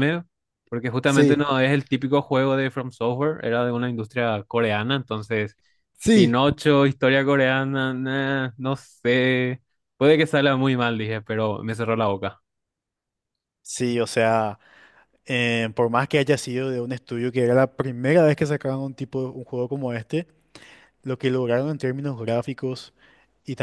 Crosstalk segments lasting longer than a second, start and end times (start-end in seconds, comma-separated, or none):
none